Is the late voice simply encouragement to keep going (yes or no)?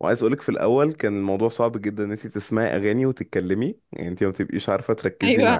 yes